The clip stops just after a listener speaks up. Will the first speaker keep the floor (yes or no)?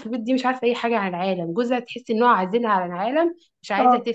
yes